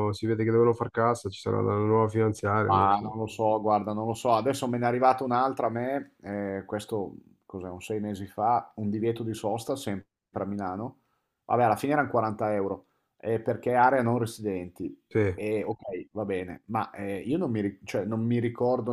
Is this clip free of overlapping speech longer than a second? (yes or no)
yes